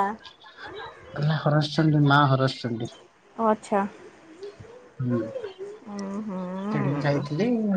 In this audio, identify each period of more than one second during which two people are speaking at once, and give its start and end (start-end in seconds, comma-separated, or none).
5.9-7.2